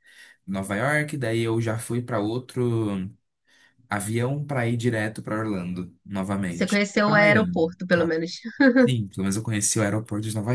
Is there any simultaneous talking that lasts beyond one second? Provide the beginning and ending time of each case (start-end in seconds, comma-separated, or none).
6.5-8.2